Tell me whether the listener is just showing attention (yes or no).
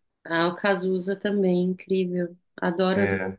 no